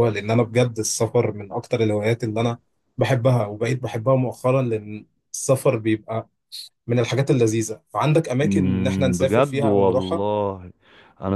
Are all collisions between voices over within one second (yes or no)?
no